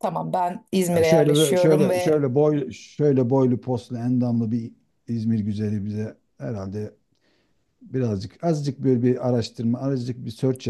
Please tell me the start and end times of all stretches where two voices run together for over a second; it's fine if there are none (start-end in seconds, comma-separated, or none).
0.9-2.2